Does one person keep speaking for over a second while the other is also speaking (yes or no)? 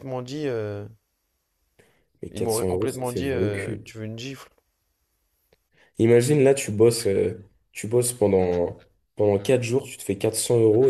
yes